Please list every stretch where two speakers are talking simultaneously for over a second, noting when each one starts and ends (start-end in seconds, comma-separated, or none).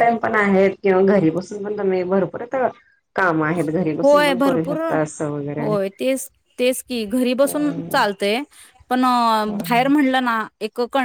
4.0-5.7